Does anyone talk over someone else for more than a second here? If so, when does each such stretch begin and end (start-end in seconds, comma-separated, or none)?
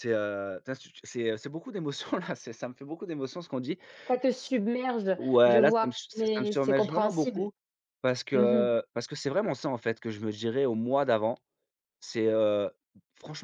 5.1-7.5